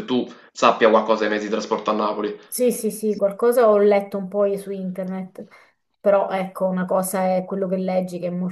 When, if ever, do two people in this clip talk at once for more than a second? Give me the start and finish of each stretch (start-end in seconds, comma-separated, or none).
none